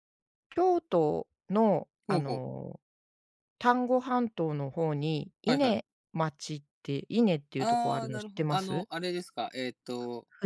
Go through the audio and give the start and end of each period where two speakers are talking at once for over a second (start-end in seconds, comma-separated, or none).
7.6-8.9